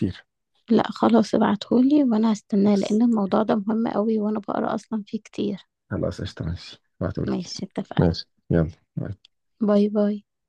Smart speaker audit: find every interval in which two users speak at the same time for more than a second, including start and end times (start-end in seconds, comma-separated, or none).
none